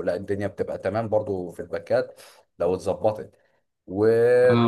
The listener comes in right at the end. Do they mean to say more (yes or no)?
no